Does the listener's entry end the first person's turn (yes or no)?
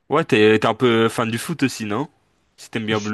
yes